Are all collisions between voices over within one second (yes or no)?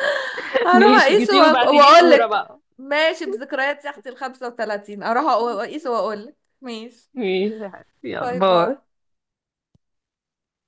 no